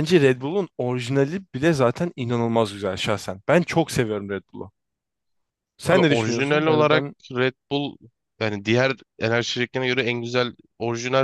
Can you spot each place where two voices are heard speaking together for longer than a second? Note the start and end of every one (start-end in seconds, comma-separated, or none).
5.9-7.2